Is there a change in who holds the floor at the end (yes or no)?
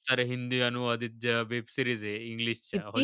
yes